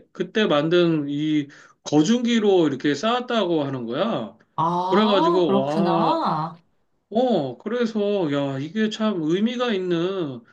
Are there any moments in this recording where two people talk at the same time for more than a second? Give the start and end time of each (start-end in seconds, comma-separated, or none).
4.9-6.2